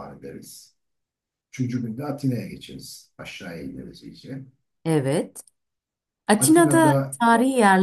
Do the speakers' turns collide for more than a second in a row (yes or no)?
no